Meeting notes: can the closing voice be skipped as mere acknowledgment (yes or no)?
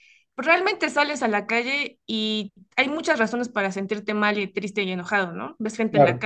yes